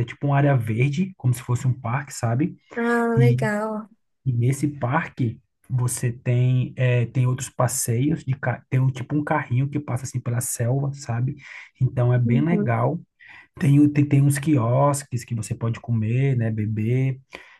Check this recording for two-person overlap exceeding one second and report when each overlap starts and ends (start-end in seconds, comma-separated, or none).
none